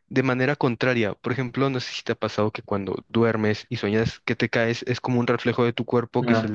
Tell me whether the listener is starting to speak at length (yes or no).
no